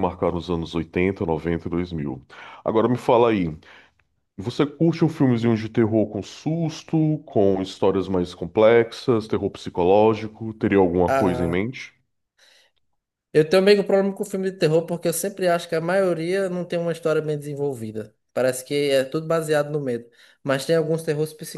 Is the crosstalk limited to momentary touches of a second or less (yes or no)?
yes